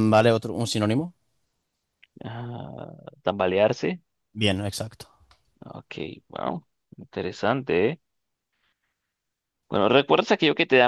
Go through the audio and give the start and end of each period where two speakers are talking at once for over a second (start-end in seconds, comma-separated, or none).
none